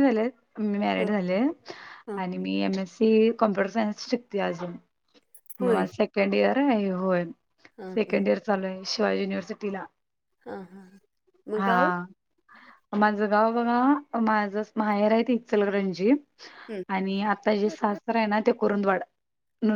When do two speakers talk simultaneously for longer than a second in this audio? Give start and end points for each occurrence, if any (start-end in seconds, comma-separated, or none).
none